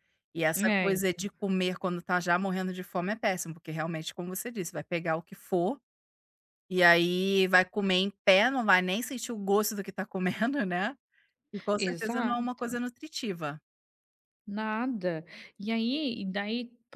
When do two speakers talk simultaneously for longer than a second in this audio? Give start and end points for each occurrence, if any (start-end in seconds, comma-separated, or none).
none